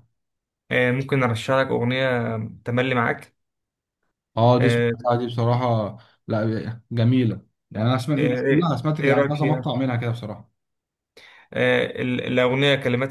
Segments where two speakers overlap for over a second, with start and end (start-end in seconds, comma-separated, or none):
8.2-9.7